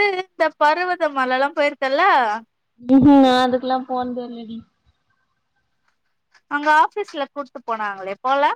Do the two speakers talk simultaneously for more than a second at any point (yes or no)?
no